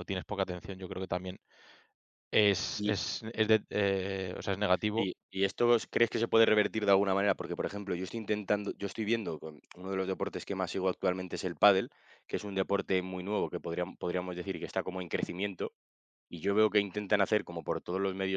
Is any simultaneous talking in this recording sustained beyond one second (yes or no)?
no